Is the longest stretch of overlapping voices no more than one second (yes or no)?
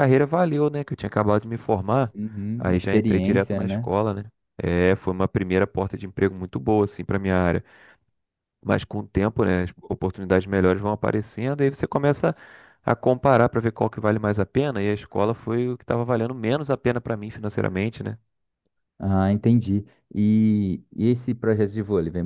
no